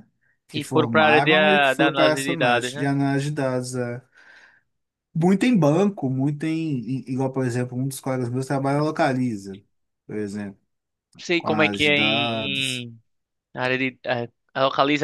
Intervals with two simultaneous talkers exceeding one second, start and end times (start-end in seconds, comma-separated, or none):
0.5-2.9, 11.4-12.8